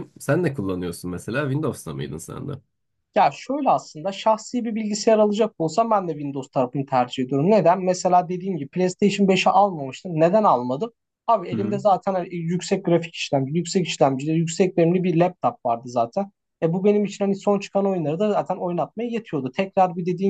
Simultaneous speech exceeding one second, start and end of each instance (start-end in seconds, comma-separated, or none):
none